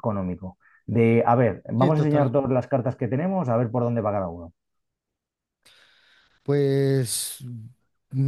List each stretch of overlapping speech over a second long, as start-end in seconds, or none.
none